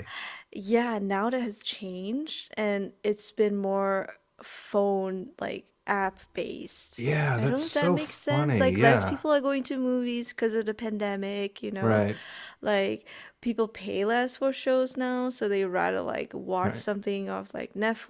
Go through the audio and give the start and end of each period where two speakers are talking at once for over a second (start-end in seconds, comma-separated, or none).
7.0-9.2